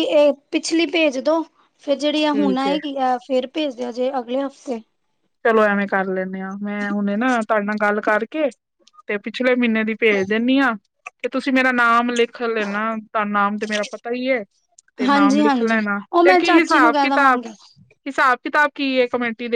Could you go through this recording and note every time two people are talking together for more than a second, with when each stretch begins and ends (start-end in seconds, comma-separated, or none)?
15.1-17.4